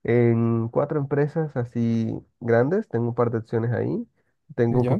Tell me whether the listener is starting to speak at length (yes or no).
no